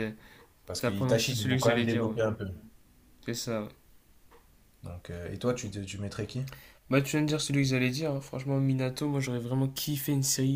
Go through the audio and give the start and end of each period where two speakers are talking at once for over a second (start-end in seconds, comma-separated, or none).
0.8-2.2